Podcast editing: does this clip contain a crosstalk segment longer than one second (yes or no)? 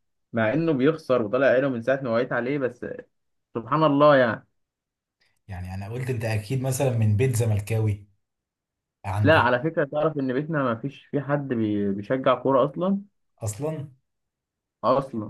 no